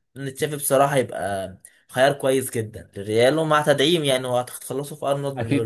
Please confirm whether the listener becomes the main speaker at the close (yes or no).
yes